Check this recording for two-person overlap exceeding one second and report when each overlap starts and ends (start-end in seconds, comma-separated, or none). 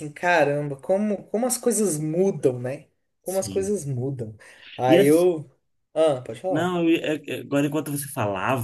none